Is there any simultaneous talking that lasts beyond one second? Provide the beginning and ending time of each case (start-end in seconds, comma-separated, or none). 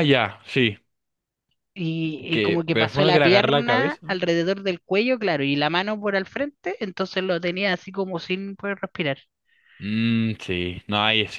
2.3-4.1